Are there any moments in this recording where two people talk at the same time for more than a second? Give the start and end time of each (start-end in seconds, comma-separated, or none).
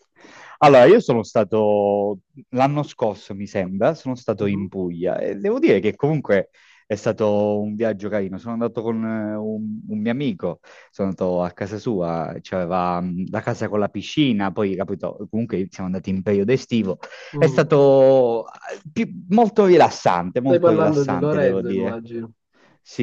20.4-22.0